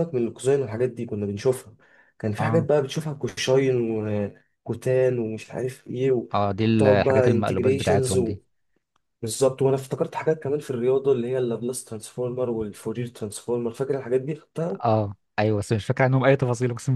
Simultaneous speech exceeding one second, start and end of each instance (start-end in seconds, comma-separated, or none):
6.7-8.2